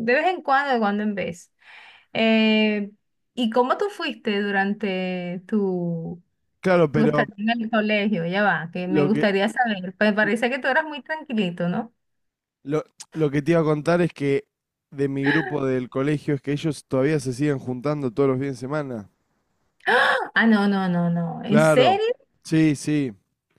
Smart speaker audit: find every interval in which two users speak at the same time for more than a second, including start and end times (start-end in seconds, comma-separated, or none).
none